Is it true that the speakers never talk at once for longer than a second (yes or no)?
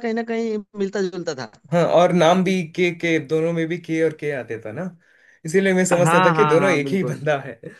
no